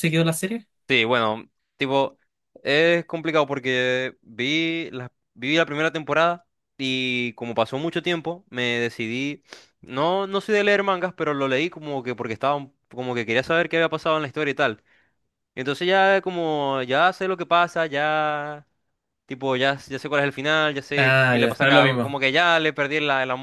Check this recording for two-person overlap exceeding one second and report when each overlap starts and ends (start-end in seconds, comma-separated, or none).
21.0-22.2